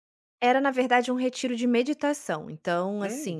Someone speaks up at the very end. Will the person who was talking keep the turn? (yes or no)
yes